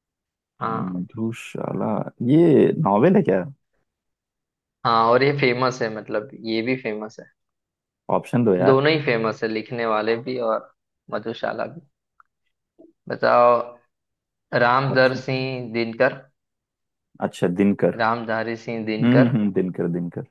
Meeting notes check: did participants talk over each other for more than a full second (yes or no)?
no